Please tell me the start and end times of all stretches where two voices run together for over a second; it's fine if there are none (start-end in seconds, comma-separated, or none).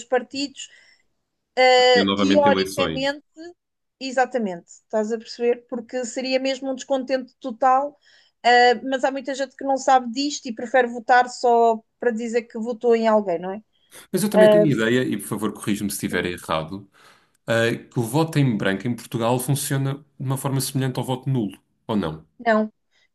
1.9-3.2